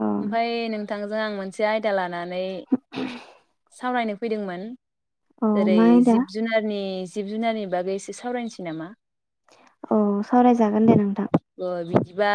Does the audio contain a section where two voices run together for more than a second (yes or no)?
no